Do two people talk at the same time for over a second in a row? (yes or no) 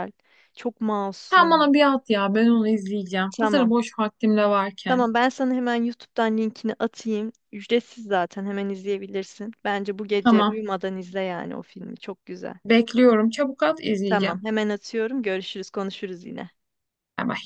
no